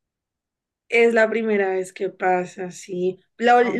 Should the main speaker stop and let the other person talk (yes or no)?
no